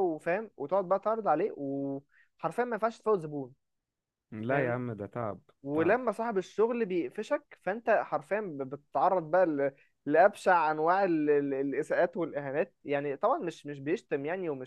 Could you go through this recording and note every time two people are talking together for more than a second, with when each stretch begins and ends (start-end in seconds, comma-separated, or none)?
none